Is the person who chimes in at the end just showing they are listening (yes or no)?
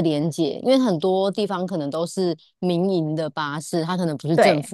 yes